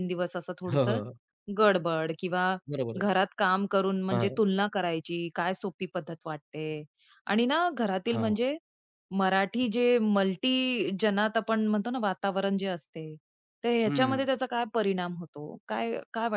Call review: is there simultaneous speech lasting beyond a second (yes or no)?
no